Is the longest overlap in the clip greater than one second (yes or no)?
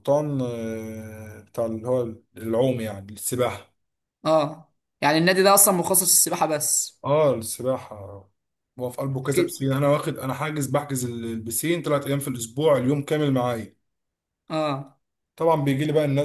no